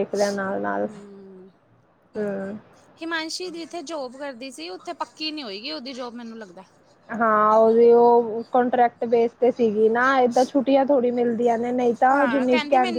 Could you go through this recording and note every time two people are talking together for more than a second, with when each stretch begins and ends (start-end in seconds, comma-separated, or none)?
none